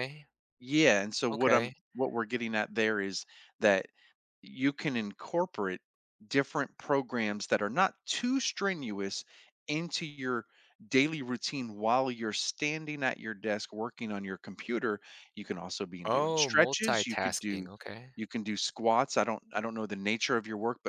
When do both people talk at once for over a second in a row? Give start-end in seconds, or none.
16.0-17.7